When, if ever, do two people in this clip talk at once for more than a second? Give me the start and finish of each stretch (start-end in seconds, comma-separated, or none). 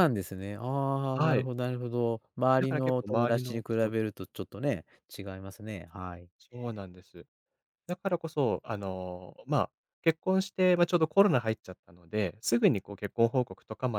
2.6-3.9